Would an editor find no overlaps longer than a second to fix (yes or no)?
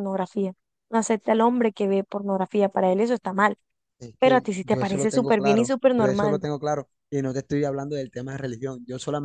no